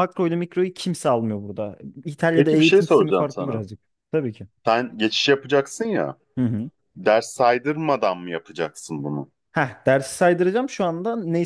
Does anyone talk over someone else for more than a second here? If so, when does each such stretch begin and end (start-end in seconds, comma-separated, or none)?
2.4-3.6